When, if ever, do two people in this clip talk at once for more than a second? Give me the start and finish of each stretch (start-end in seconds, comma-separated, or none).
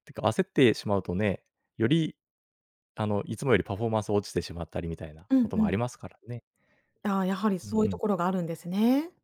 none